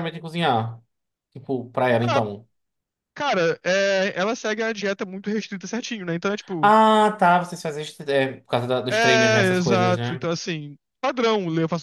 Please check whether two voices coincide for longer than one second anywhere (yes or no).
yes